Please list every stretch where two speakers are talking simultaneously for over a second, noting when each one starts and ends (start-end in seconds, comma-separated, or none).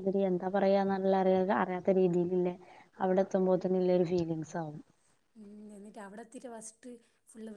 none